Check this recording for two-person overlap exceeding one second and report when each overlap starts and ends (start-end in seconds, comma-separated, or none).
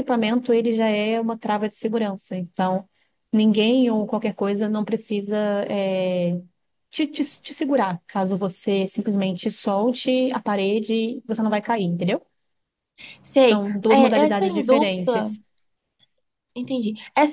13.4-15.3